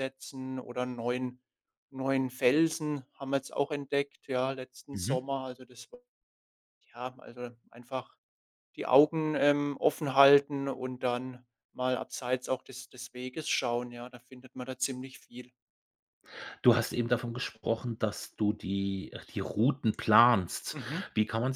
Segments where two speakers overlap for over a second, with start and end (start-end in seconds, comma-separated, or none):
none